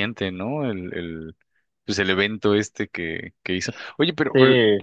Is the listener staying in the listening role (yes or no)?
yes